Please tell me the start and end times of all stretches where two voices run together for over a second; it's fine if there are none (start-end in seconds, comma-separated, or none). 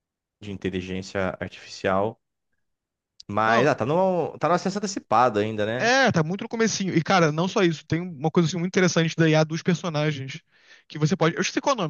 none